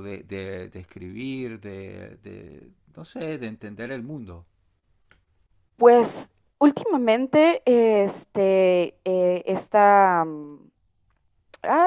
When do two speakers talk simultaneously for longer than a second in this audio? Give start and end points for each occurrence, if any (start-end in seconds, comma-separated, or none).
none